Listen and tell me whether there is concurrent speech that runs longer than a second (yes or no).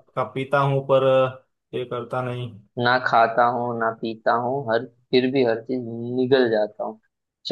no